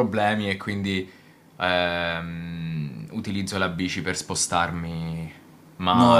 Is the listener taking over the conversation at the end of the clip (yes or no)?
yes